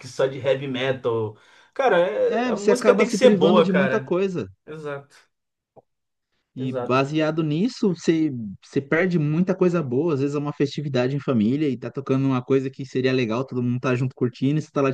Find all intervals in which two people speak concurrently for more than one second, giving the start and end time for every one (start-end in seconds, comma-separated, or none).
2.2-4.2